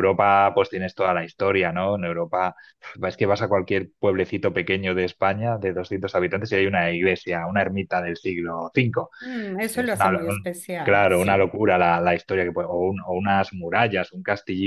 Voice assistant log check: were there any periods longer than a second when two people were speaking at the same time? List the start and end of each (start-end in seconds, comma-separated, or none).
9.6-11.5